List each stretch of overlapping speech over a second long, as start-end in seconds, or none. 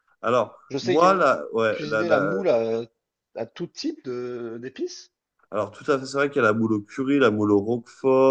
0.7-2.3